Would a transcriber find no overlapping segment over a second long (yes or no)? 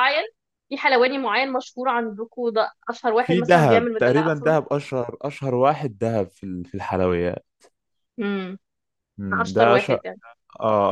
no